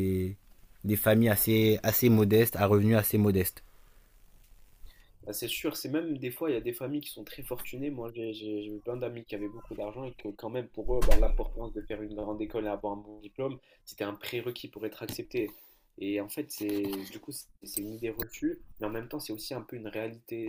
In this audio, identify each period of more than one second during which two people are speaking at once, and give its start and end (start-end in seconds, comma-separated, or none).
none